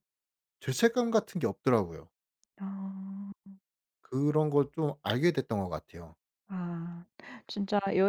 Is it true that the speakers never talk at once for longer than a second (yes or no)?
yes